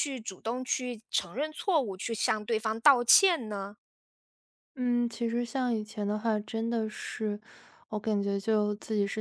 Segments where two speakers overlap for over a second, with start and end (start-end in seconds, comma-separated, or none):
none